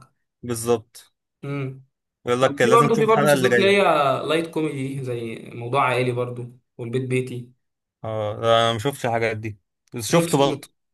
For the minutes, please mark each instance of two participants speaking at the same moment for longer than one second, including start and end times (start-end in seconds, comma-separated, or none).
2.4-3.8